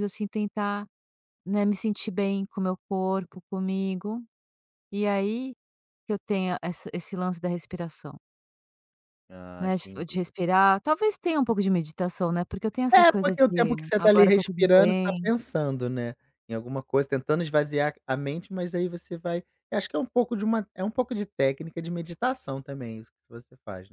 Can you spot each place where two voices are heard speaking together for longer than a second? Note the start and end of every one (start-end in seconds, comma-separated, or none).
12.9-15.3